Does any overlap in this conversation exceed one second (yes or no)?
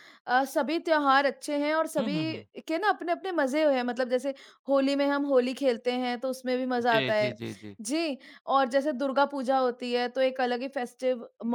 no